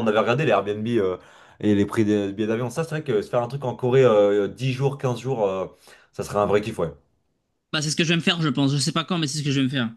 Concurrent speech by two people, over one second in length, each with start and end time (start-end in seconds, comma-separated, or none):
none